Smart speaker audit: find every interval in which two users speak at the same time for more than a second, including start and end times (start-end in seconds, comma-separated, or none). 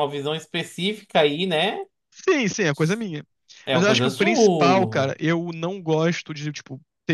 3.7-5.2